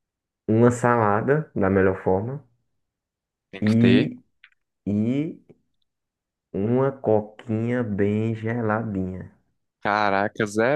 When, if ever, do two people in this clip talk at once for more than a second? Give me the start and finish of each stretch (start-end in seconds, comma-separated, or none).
none